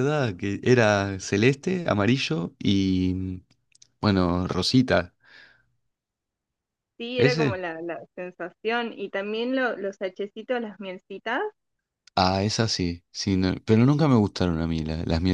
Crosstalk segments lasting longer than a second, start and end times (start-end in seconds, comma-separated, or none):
none